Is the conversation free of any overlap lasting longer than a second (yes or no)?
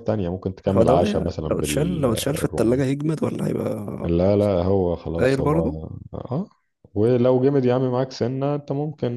no